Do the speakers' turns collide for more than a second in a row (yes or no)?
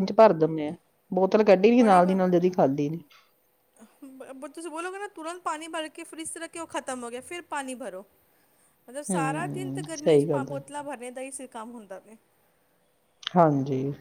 yes